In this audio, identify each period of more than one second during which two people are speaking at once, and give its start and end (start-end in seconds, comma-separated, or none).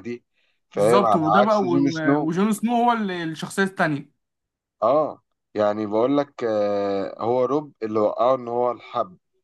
0.7-2.3